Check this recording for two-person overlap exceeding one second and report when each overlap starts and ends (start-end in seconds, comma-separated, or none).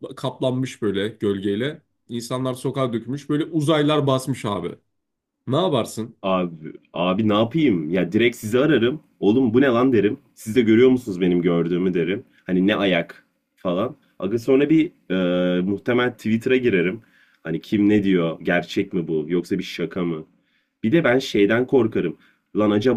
none